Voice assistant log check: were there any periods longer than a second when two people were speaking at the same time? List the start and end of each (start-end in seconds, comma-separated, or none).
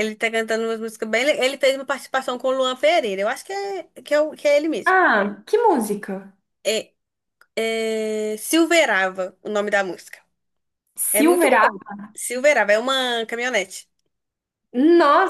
none